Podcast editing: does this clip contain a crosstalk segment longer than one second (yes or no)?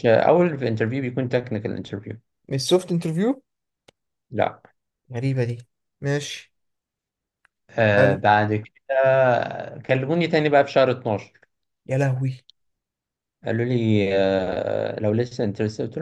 no